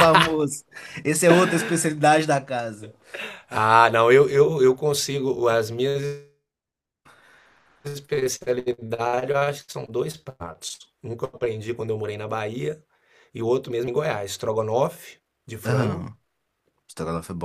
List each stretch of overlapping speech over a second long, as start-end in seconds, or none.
none